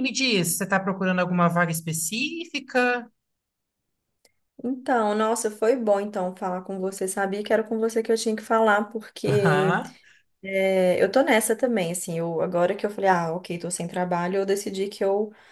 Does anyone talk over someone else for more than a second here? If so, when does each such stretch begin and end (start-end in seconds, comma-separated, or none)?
none